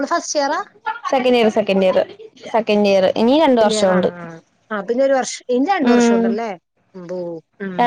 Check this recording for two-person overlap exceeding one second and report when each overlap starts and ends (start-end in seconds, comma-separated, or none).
none